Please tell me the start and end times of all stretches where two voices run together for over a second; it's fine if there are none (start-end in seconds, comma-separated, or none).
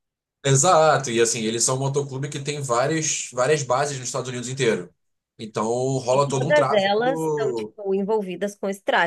6.1-7.7